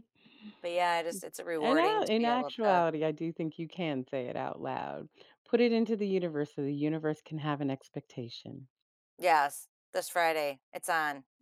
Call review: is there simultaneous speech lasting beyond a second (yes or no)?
yes